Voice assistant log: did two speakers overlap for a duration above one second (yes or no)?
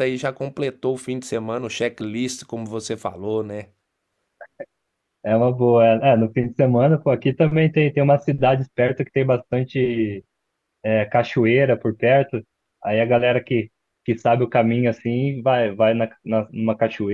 no